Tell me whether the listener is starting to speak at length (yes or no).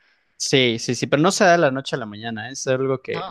no